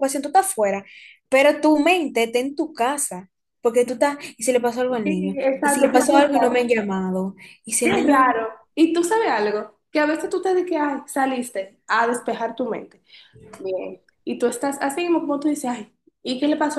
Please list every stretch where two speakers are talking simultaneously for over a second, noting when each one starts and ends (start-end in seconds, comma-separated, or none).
5.0-6.7